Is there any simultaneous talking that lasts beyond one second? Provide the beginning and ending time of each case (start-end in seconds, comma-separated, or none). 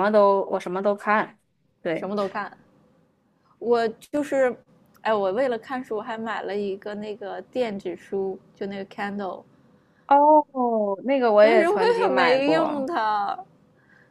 11.4-12.9